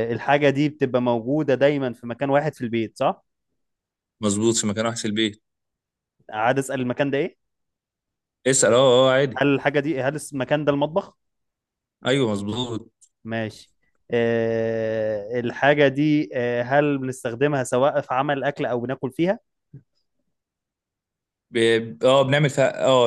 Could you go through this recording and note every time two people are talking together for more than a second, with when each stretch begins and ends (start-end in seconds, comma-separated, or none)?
none